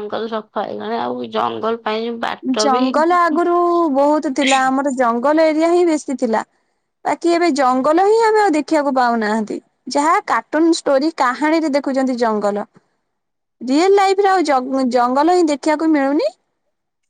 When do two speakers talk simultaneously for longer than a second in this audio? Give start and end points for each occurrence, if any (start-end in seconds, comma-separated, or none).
none